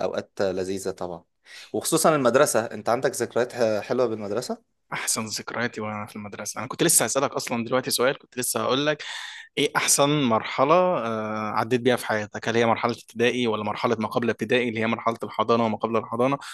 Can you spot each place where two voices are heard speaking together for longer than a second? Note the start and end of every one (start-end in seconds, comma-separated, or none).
none